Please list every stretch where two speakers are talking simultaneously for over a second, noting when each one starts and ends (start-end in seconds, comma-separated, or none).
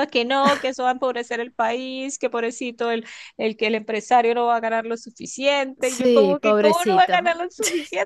5.8-7.4